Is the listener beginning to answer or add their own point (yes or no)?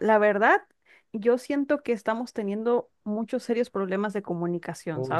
yes